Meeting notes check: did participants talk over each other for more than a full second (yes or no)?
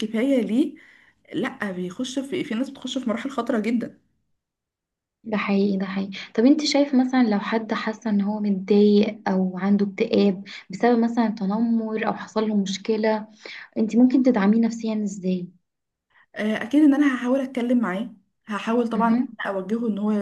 no